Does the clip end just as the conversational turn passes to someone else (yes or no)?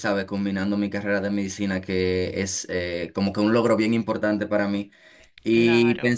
no